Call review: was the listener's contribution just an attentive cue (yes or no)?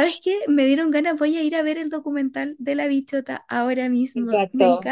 no